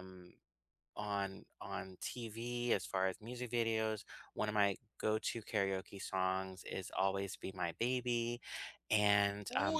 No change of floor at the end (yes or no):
no